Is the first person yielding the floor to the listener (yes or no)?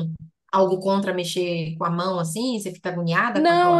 yes